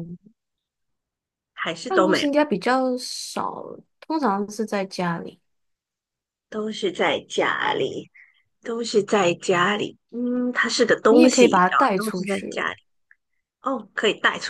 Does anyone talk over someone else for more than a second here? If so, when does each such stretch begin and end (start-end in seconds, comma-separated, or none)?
11.1-12.7